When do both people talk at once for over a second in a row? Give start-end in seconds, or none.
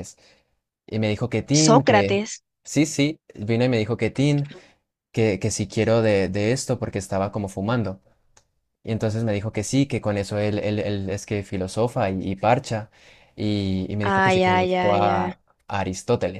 14.0-15.3